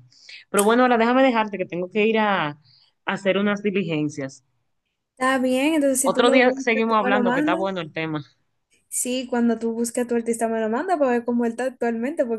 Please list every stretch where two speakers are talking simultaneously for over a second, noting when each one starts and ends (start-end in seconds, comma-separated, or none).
6.0-7.6